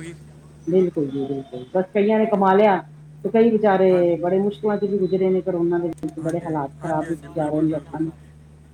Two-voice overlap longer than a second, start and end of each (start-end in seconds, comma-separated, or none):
6.2-8.0